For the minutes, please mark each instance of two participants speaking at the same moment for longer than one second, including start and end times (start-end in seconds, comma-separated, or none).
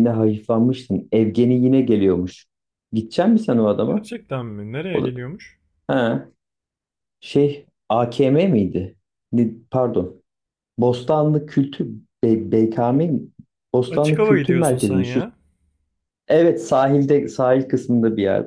13.9-15.2